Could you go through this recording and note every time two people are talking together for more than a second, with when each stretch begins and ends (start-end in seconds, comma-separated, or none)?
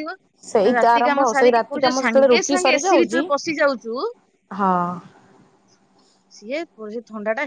0.7-3.2